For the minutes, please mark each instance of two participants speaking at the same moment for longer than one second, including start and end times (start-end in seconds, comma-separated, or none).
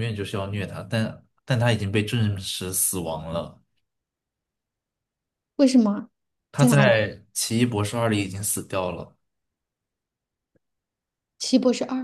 none